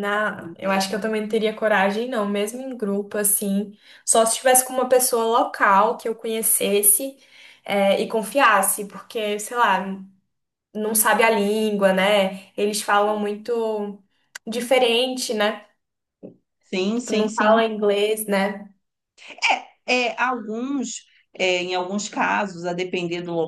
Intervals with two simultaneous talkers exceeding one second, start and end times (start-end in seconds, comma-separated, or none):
none